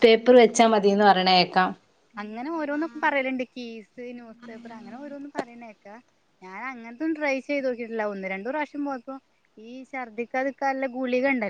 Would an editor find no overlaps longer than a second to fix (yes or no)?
yes